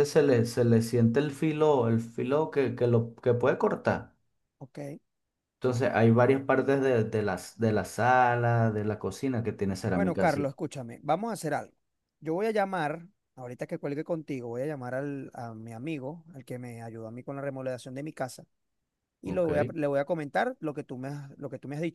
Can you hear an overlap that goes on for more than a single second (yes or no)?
no